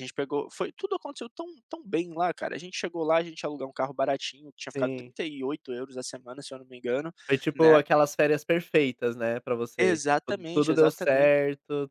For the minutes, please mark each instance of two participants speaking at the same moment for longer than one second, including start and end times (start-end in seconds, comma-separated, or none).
9.8-11.4